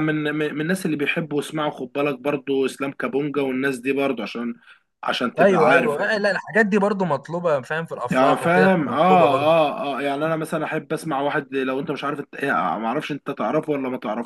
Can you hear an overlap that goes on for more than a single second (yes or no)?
yes